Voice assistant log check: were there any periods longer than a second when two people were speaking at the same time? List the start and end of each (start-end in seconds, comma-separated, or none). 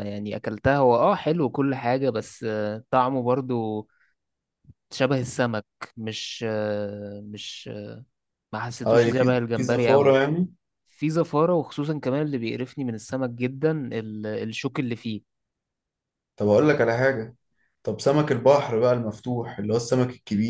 8.8-10.2